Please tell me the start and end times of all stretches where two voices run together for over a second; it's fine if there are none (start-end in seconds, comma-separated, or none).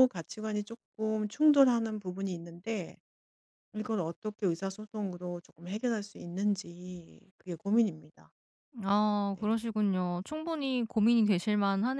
none